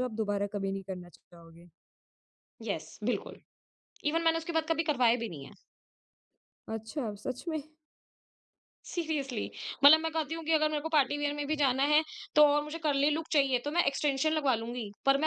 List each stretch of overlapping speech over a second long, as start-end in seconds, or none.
none